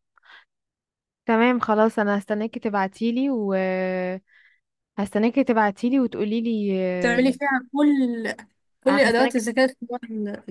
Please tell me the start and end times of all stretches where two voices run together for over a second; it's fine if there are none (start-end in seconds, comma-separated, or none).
none